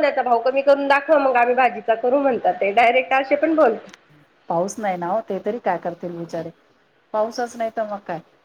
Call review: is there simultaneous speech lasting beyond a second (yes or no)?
no